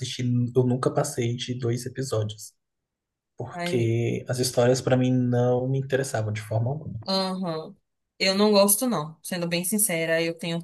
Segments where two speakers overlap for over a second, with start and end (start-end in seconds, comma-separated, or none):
none